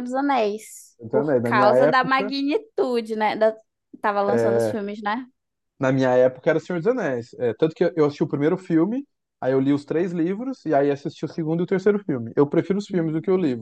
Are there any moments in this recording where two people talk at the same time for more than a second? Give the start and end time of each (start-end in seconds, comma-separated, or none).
1.0-2.3